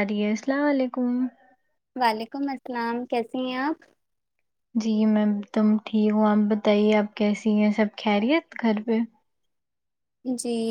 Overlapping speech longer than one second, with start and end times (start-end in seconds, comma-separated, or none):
none